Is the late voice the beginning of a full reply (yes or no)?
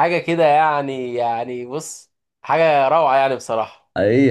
yes